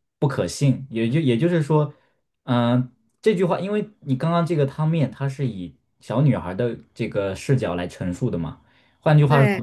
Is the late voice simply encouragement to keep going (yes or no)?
yes